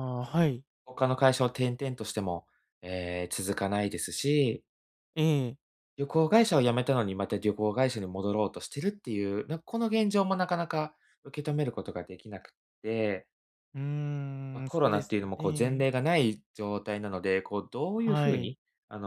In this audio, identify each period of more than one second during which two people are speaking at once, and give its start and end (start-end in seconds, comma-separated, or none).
14.6-15.8